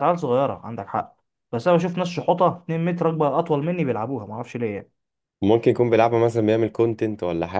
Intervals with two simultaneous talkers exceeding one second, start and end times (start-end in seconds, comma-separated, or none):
none